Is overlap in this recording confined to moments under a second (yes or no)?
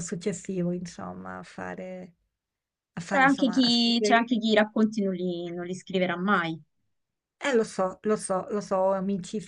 no